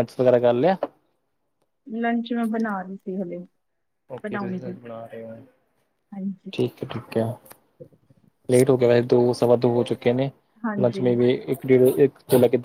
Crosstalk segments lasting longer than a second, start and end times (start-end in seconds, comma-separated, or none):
none